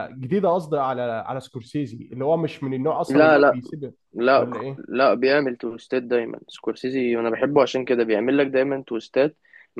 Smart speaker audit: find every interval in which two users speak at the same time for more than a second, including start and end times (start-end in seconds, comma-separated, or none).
none